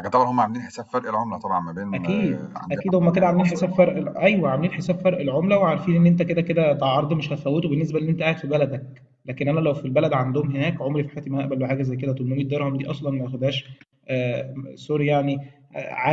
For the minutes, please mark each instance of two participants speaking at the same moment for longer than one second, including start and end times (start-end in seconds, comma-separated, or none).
1.9-3.9